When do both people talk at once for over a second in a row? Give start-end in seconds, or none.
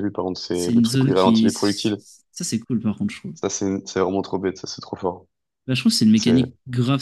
0.5-2.0